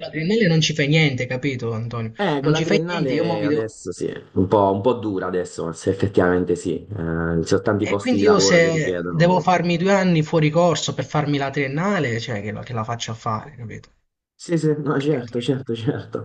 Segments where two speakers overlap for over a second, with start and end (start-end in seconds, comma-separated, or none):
2.2-3.8, 7.8-9.4